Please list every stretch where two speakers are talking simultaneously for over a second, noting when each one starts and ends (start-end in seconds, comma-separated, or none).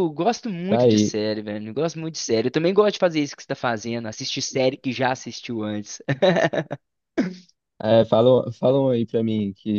none